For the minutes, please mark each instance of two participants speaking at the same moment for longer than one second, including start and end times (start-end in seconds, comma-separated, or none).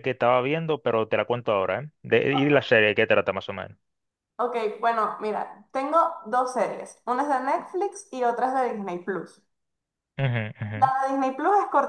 none